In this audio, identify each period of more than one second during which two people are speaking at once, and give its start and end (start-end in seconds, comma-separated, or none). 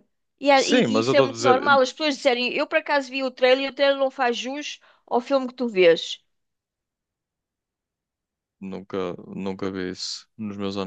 0.5-1.8